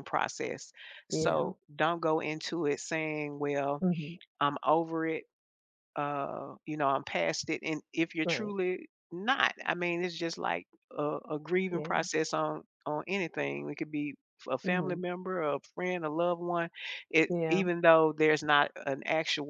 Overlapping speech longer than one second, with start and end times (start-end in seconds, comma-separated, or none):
none